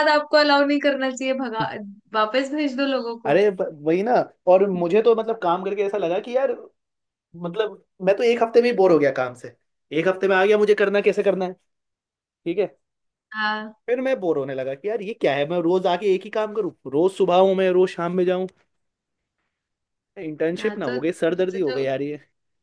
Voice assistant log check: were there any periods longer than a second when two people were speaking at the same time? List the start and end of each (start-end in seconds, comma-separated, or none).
20.6-21.8